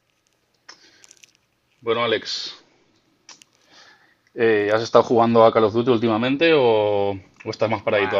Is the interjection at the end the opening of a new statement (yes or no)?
yes